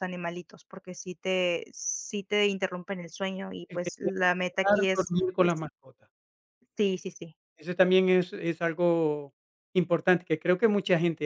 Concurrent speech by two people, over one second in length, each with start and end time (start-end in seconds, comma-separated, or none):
3.7-5.1